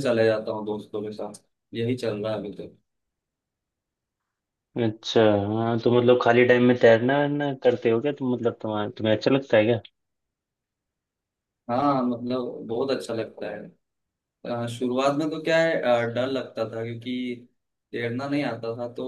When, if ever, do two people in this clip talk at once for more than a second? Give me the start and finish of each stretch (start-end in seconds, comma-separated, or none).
none